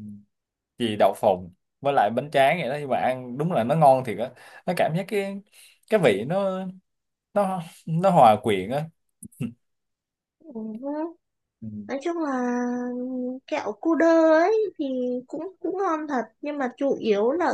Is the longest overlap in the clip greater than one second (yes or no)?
no